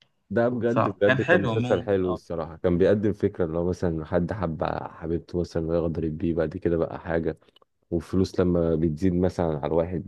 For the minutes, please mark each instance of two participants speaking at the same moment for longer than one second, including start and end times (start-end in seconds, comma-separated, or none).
0.7-2.4